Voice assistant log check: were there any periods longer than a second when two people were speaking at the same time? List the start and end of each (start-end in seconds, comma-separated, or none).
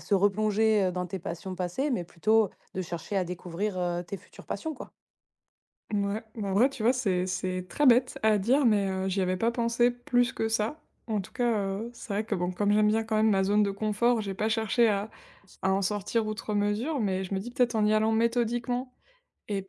none